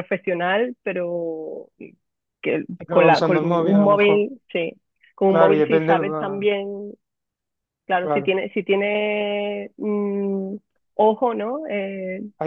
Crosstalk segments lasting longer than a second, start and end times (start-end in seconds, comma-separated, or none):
2.8-4.3, 5.3-6.5